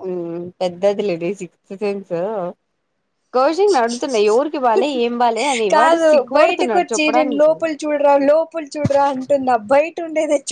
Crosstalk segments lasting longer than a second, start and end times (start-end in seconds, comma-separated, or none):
5.7-7.5